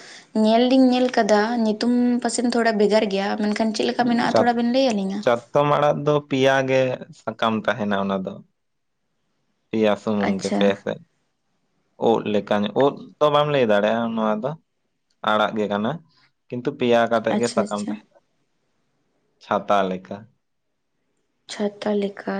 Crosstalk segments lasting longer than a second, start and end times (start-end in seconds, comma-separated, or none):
none